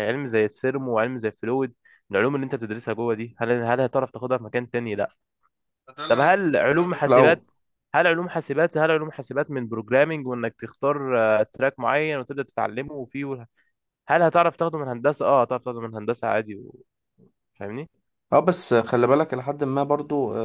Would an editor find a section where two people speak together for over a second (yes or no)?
yes